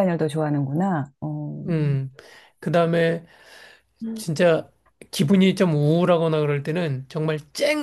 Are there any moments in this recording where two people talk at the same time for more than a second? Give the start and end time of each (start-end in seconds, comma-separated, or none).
none